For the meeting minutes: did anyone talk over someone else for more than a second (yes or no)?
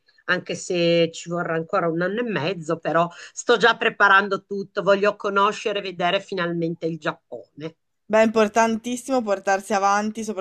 no